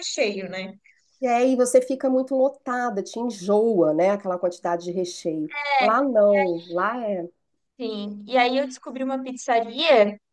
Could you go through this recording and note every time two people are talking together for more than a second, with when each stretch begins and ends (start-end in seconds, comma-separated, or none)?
none